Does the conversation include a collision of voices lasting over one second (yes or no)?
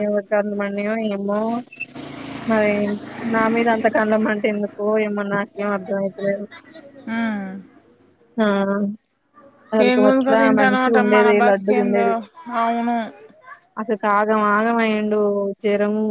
yes